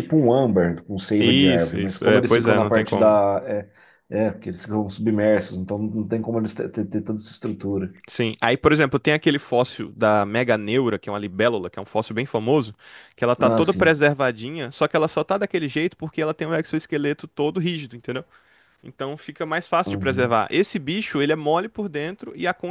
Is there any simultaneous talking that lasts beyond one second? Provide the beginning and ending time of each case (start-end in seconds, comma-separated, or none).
1.2-3.2